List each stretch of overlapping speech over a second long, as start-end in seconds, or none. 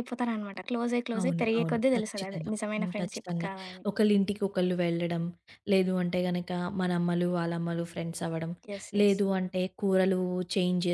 1.2-3.5